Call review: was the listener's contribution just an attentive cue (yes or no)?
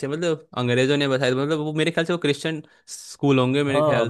no